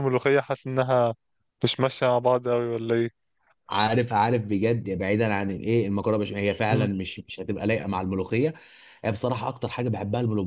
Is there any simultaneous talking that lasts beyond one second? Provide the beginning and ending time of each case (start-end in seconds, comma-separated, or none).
none